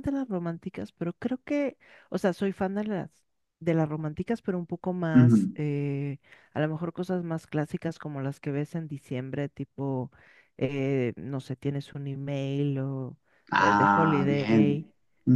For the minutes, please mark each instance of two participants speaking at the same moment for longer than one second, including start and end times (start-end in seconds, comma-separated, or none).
13.6-14.9